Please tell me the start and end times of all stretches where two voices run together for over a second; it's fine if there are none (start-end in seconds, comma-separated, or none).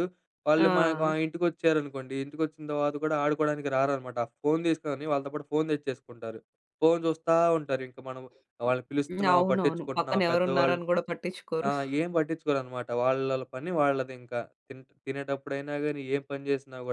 9.3-10.8